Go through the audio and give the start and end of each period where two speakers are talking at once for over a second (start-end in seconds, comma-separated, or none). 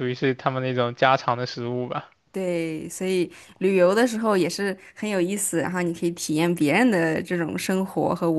none